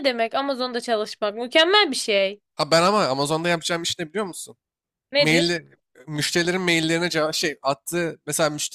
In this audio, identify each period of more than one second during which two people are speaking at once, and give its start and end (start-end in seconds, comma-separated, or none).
none